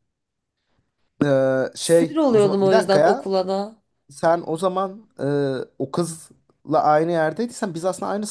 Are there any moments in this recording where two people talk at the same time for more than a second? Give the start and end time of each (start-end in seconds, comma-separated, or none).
1.8-3.3